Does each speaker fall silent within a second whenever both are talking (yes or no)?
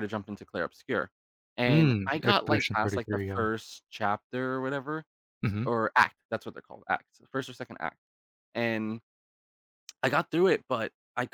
no